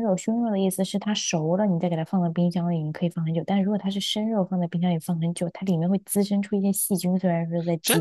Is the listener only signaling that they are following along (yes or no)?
no